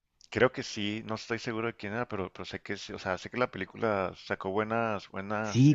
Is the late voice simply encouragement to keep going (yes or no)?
no